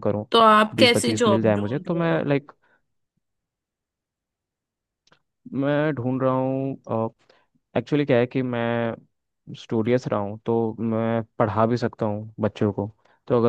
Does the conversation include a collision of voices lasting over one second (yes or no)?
yes